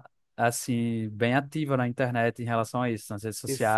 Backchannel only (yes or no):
no